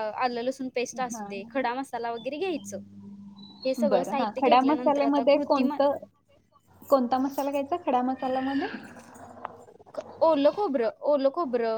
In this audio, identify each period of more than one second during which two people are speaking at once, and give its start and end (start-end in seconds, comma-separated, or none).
3.9-5.8